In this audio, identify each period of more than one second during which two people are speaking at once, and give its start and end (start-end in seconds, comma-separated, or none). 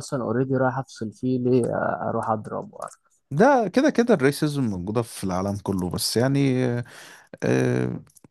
none